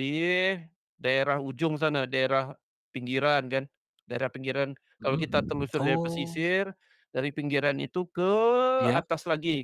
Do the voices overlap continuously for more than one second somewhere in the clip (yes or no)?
yes